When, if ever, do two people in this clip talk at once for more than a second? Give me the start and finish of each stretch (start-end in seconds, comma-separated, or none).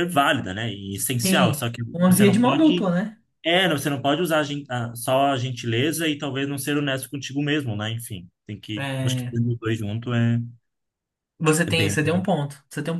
1.2-2.9